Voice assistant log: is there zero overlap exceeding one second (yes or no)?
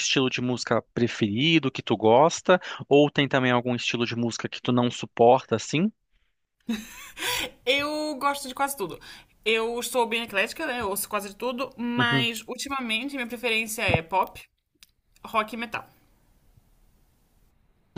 yes